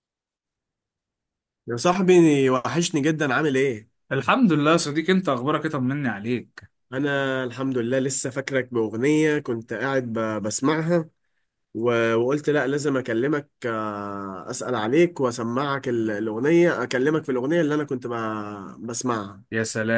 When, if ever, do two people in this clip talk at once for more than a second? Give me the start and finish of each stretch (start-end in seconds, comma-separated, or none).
none